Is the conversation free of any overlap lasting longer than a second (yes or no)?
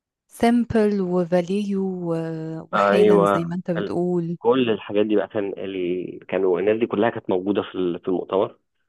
no